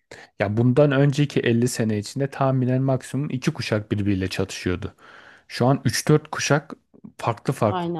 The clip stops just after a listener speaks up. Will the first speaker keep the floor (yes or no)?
yes